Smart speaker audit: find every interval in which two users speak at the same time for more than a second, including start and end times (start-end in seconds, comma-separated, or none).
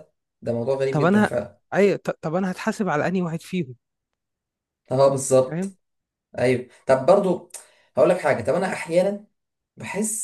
none